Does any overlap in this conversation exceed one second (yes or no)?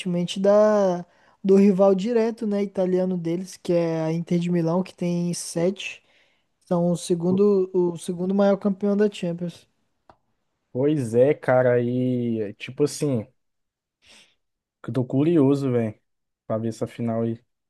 no